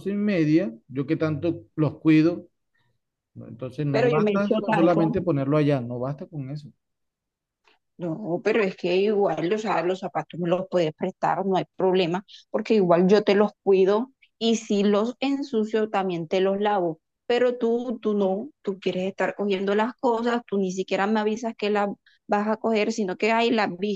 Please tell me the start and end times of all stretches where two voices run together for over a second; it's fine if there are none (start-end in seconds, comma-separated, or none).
3.9-5.2